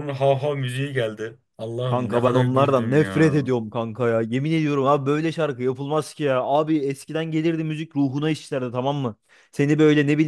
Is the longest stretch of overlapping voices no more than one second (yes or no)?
no